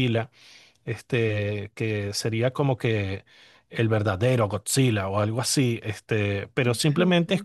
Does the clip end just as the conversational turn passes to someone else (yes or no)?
no